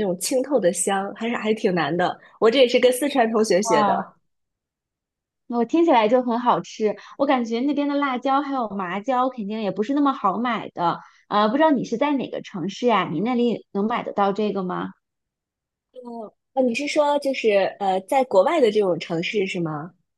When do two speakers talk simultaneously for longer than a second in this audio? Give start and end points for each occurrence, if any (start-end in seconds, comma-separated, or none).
none